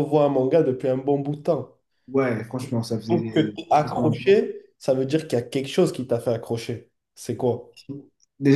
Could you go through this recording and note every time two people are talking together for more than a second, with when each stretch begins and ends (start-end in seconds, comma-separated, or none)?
3.1-4.4